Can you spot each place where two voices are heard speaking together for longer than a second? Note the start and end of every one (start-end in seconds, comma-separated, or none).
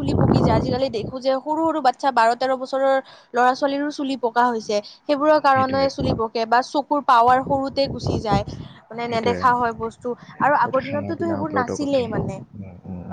10.7-12.3